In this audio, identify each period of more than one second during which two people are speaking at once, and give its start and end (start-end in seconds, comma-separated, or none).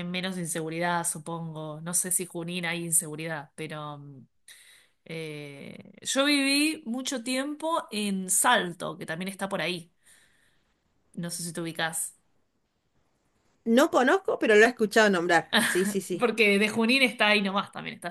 none